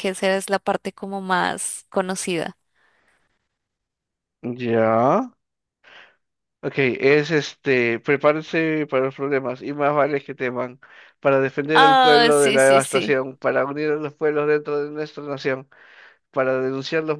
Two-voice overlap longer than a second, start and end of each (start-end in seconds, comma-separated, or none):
11.7-13.2